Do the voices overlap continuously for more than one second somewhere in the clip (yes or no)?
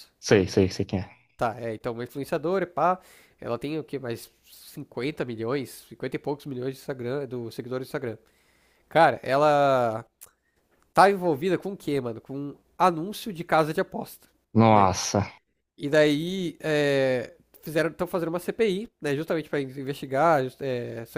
no